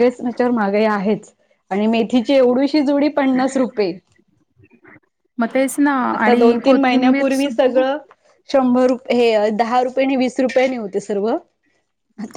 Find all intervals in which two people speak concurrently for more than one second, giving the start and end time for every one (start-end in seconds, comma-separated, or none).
6.2-7.8